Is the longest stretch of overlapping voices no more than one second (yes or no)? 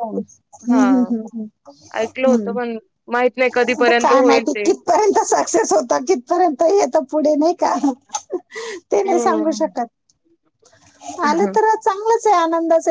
yes